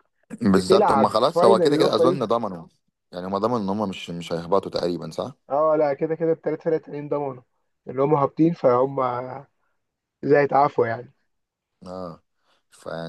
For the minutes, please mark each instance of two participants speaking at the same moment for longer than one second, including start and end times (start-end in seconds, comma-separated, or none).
0.5-2.3